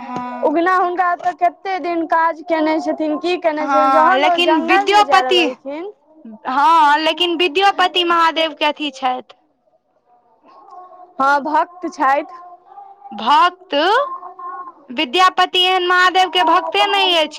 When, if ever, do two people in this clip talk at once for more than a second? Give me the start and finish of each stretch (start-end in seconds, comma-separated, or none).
3.6-5.4